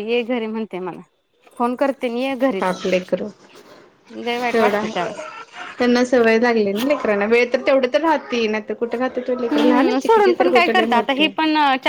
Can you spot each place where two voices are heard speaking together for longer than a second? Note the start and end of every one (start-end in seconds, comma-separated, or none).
9.5-11.3